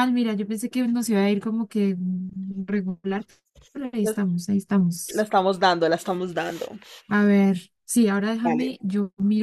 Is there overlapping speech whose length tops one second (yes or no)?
no